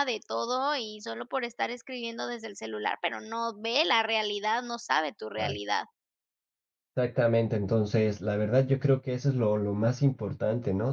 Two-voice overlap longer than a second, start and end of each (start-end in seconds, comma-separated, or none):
none